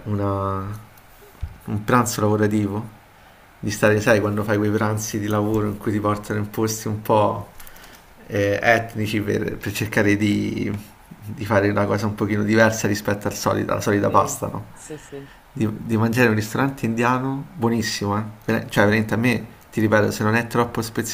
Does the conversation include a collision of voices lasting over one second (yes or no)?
no